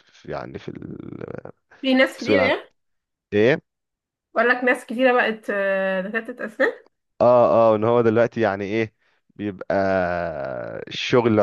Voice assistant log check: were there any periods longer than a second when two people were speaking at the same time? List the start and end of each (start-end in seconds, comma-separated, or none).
none